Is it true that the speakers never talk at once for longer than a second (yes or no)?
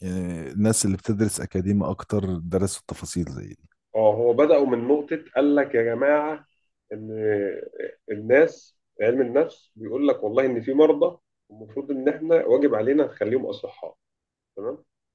yes